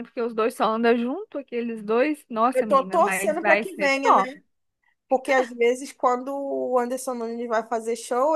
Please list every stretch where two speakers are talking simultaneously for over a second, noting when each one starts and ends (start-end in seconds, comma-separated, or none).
2.5-4.2